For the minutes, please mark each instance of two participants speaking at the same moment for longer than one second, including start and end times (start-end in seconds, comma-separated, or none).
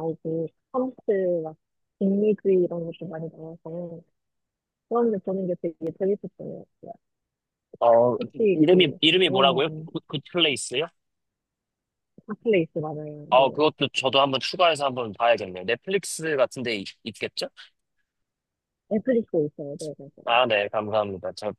8.2-9.9